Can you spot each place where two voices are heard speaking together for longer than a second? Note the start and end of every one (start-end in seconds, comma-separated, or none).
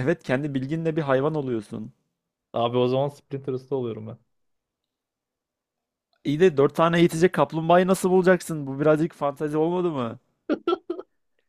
none